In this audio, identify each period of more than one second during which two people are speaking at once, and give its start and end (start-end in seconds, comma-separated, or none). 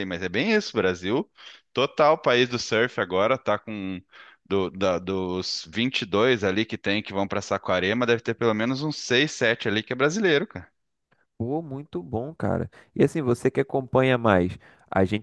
none